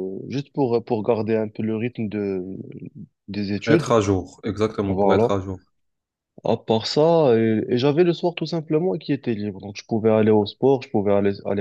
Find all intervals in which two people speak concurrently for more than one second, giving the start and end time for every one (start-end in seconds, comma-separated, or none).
none